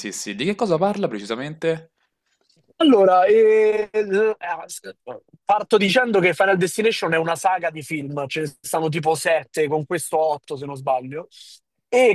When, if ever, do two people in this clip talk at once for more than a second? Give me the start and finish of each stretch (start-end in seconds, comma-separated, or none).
none